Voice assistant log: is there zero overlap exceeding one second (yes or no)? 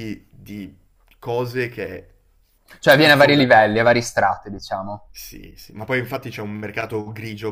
yes